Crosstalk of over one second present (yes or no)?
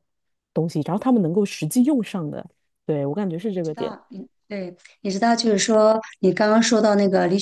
no